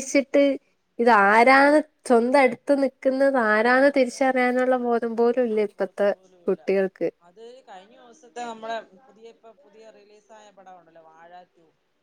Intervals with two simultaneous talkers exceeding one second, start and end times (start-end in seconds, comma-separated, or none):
none